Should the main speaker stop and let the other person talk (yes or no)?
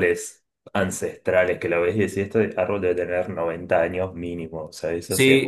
yes